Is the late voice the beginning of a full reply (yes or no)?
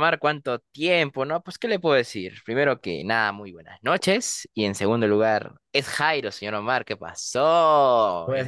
yes